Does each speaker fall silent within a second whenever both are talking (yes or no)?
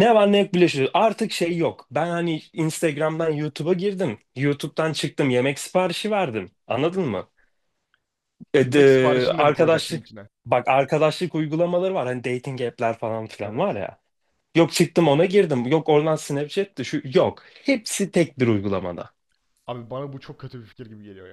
no